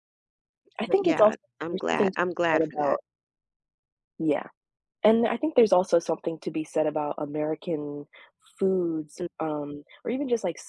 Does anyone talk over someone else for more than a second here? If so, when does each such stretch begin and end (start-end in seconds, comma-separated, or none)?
0.8-3.0